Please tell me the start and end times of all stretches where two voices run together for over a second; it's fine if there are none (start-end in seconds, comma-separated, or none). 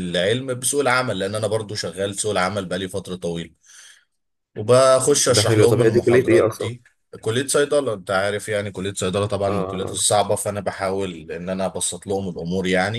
5.3-6.7